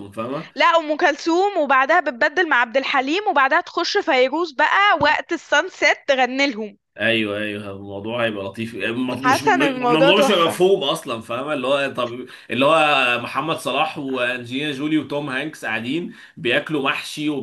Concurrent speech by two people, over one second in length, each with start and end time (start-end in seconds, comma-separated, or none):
9.2-10.6